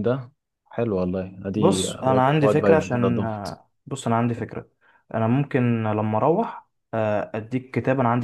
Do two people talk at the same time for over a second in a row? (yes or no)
yes